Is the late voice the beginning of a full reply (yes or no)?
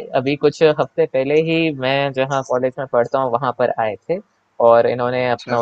no